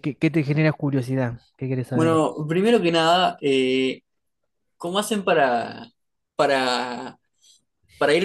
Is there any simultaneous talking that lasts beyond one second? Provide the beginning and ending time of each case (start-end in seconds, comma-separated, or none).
none